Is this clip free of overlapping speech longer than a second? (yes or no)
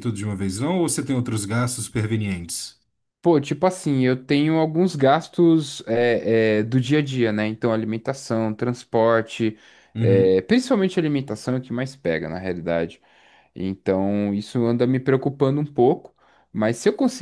yes